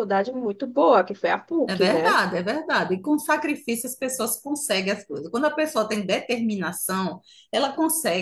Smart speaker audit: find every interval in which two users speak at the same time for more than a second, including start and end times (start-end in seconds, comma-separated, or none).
none